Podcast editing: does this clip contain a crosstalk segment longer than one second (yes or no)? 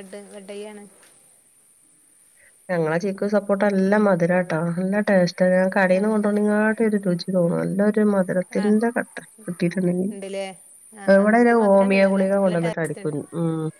yes